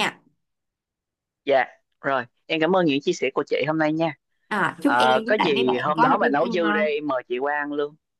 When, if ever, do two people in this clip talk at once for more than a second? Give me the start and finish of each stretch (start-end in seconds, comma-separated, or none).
4.8-6.8